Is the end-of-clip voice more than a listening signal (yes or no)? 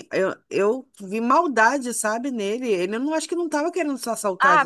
yes